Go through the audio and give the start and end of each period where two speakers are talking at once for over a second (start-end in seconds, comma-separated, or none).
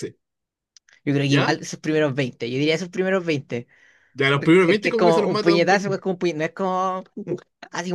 4.6-6.0